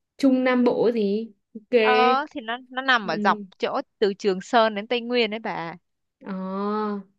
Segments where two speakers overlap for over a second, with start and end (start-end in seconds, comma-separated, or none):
none